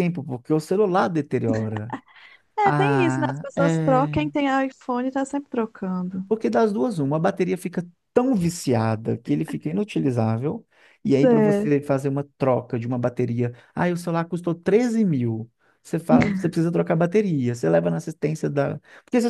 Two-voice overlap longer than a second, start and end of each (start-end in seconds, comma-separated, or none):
2.6-4.3